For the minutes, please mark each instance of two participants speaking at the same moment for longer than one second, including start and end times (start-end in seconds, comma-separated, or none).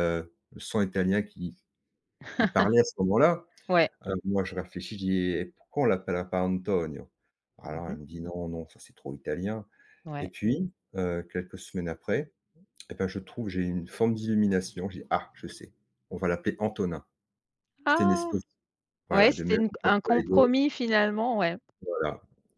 19.1-20.5